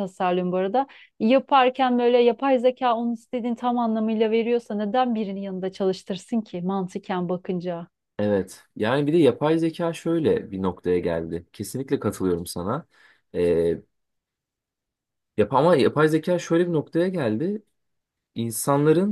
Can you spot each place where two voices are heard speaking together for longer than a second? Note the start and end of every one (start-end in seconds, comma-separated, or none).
none